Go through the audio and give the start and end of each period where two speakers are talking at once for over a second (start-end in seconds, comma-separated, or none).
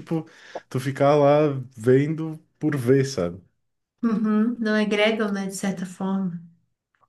none